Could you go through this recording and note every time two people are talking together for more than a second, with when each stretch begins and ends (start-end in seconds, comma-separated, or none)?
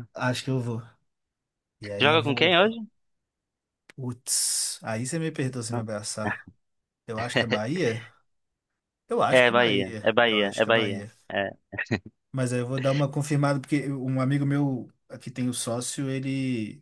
9.3-11.1